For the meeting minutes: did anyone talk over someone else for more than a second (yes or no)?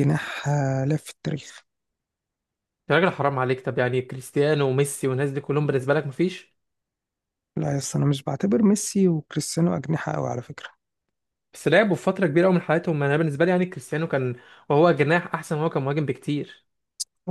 no